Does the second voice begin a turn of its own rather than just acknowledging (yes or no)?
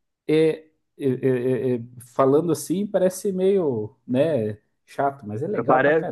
yes